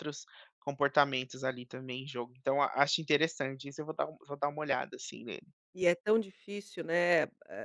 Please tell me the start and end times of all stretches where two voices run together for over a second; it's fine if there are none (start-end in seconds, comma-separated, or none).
none